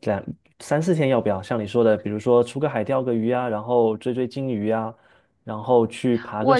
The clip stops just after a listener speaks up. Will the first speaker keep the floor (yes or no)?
no